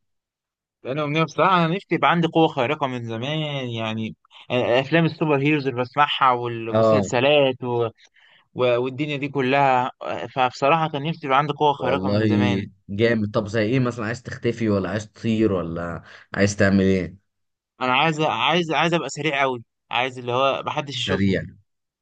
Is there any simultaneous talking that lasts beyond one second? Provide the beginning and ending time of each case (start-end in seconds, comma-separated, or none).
none